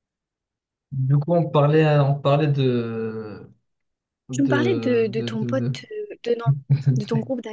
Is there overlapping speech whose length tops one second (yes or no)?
yes